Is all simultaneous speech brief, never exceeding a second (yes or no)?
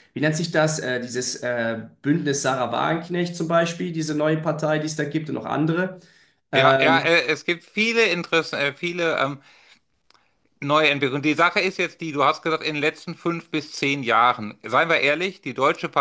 yes